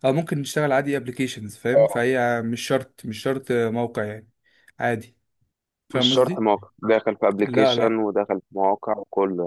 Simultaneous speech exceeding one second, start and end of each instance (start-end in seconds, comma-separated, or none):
none